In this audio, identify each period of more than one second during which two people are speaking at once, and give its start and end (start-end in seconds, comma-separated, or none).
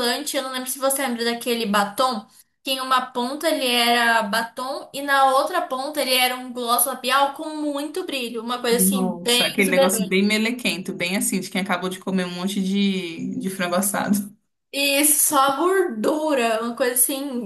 8.7-10.2